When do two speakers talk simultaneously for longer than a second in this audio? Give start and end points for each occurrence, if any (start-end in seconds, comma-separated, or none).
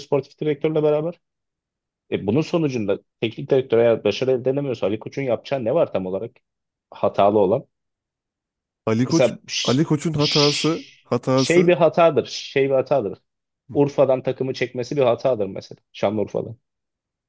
9.1-11.8